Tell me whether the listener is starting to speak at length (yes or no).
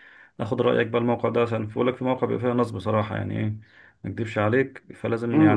yes